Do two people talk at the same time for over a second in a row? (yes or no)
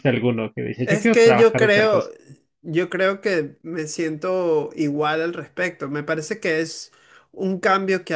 yes